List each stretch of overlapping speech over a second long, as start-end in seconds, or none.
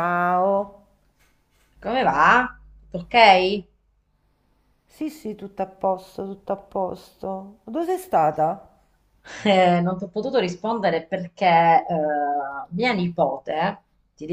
none